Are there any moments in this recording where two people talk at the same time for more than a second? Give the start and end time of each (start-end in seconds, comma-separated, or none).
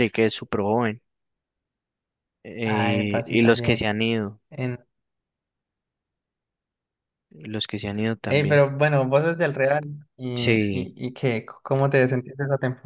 2.6-3.9